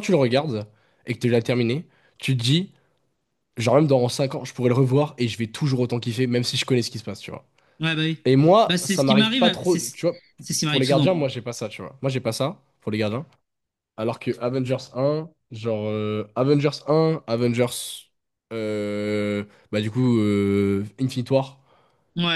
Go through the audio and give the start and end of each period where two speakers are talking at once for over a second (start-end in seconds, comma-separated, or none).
8.7-10.0